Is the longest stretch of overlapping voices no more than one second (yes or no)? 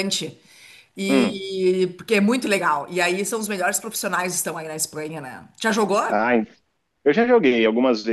yes